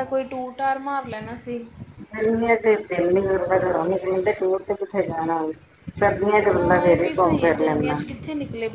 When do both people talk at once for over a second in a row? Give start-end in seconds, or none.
6.5-8.0